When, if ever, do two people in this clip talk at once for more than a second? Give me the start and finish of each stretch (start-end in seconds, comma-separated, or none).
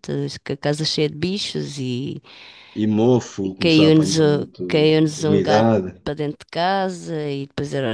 3.4-6.0